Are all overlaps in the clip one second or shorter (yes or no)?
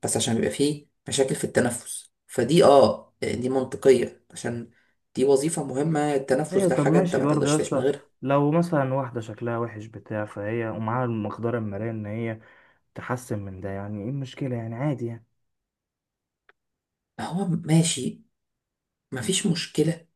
no